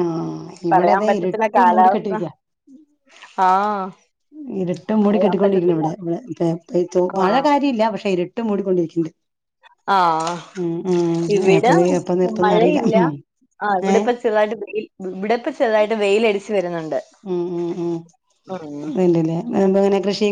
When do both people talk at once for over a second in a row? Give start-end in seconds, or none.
0.7-2.2